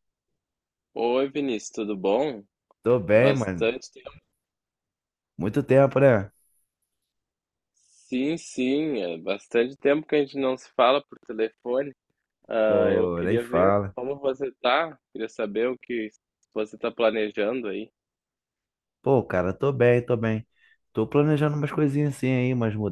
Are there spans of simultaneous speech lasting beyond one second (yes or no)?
yes